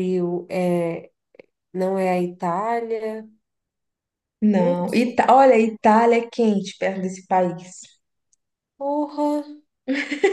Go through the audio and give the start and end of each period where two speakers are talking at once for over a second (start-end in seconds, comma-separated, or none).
none